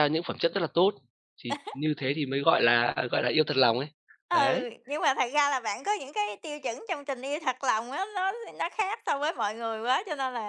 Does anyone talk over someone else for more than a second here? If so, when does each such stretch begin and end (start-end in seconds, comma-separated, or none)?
none